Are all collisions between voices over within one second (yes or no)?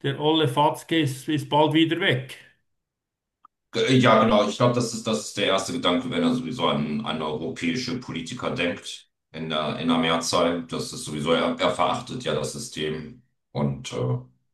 yes